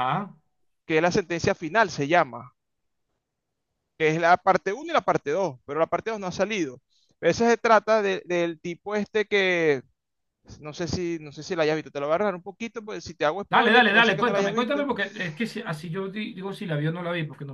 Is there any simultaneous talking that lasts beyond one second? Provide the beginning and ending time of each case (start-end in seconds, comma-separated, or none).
13.5-14.8